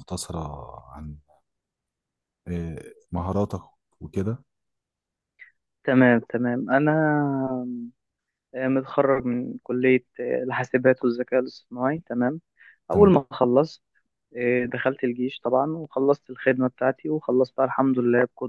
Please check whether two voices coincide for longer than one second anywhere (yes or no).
no